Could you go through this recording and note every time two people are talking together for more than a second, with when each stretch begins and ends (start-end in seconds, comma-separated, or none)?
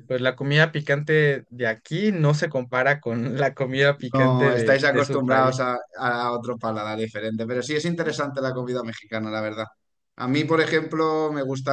4.1-5.6